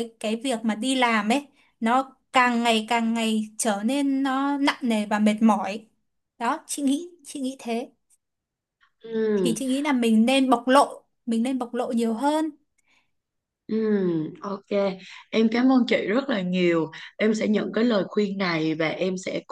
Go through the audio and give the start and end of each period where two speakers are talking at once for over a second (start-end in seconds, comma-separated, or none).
none